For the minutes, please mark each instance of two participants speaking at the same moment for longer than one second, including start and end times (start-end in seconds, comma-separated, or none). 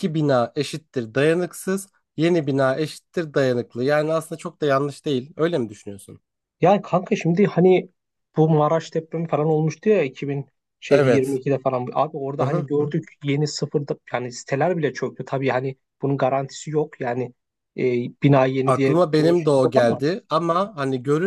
18.6-20.0